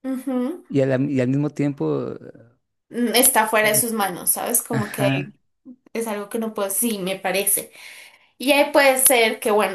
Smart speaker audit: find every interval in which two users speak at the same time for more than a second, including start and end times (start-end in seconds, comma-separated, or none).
none